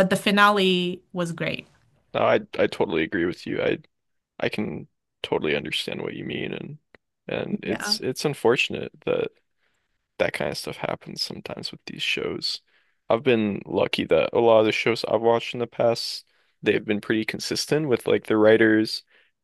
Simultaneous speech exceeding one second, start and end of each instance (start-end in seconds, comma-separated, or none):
none